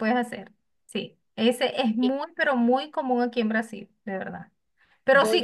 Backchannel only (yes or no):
yes